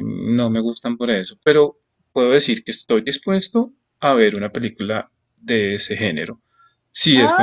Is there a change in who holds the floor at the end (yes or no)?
yes